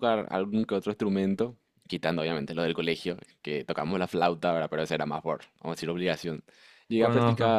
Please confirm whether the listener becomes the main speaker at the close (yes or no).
no